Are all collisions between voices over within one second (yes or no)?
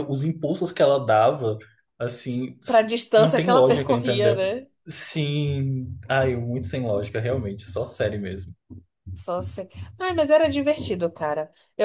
no